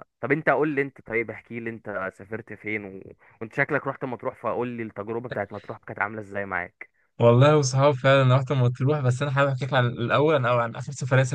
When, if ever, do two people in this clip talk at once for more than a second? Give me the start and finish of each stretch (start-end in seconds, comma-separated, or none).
none